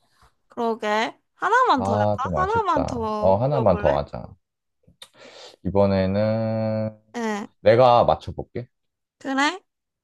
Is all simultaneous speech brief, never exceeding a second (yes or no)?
no